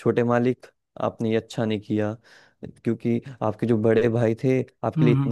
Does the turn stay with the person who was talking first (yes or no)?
yes